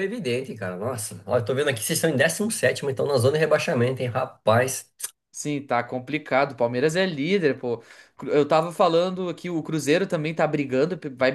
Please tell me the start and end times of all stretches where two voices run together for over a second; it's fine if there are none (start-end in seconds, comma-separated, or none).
none